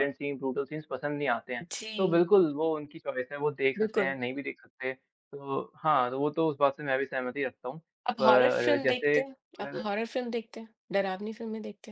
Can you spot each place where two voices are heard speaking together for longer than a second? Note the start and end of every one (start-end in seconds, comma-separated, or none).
8.2-9.8